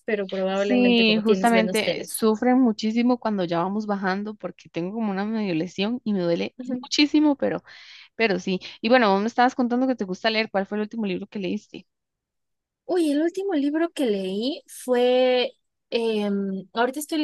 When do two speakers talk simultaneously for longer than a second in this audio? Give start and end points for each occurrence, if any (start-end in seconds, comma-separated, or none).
0.5-2.2